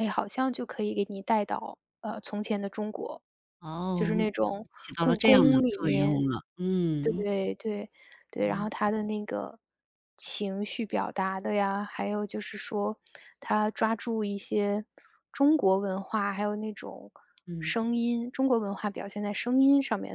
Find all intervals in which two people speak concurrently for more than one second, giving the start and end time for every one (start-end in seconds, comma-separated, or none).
4.8-6.2